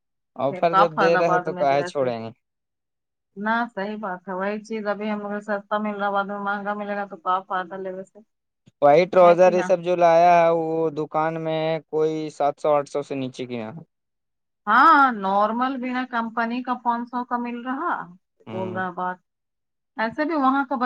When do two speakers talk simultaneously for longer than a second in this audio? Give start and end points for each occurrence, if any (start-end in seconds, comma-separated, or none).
0.7-2.1